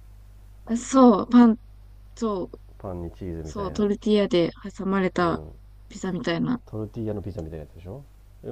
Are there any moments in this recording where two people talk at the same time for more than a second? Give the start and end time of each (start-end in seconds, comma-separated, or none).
none